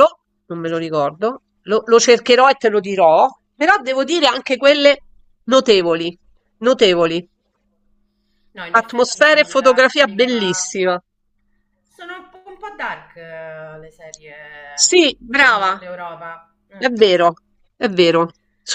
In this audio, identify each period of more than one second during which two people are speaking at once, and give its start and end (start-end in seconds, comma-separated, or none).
8.7-10.7